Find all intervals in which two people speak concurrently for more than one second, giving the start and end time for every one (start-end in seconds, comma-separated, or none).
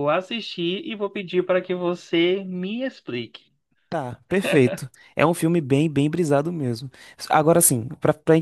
none